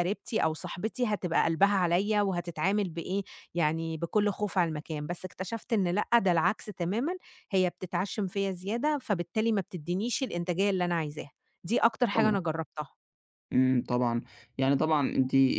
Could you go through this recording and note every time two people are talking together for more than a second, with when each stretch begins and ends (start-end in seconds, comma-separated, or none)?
none